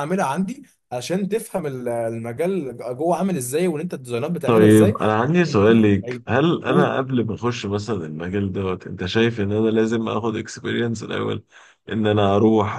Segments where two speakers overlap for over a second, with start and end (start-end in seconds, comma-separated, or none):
none